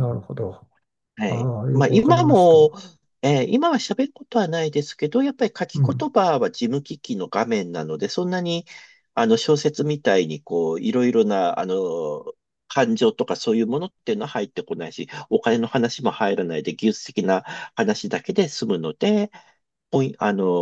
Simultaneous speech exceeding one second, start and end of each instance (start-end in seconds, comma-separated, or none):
1.3-2.6